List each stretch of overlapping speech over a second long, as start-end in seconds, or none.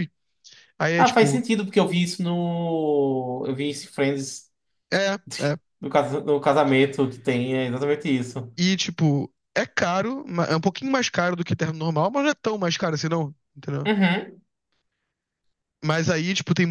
none